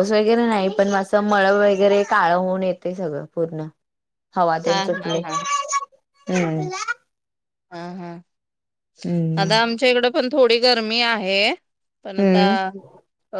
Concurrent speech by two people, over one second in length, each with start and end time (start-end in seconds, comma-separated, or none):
none